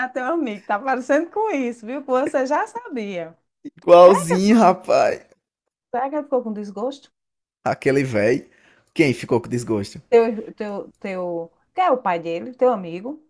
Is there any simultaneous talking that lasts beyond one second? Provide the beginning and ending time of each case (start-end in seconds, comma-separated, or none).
none